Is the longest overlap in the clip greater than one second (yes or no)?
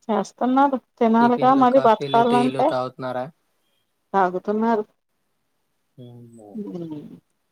yes